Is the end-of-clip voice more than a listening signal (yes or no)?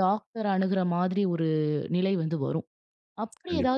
no